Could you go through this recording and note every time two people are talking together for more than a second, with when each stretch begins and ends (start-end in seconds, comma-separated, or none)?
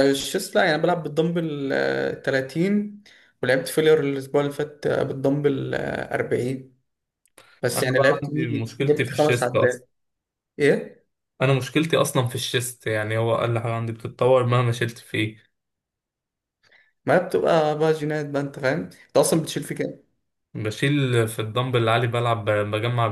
7.7-9.8